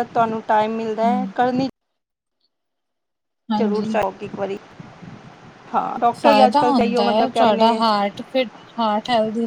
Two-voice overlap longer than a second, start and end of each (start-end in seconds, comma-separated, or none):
6.2-7.8